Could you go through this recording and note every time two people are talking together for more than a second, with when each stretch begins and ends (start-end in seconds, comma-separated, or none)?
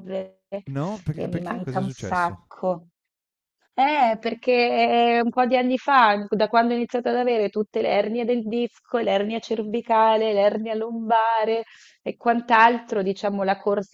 1.1-2.4